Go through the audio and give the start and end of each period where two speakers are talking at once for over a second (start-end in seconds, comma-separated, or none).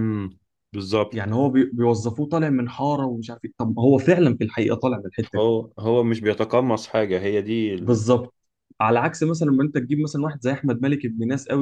none